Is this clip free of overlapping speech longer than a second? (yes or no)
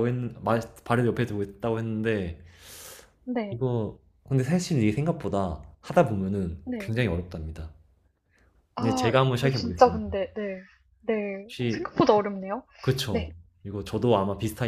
no